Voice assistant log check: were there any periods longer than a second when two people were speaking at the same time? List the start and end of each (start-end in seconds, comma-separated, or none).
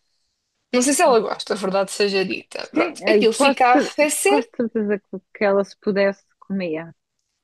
2.7-4.5